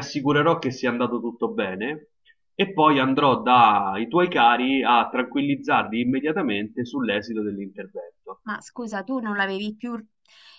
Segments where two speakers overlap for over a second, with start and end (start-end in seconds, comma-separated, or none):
none